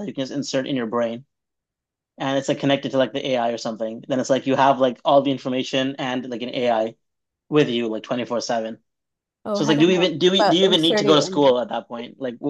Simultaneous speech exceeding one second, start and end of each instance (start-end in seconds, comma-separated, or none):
9.5-11.6